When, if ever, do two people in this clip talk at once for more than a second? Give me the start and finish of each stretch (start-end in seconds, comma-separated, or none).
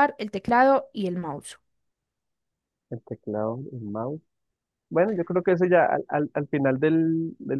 none